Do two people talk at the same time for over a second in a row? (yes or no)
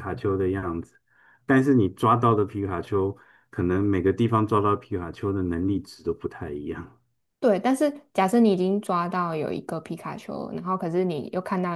no